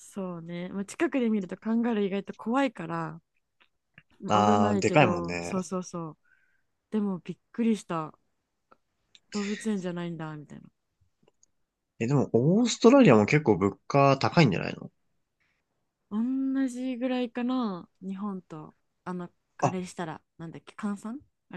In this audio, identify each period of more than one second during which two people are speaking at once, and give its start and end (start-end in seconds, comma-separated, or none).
4.3-5.5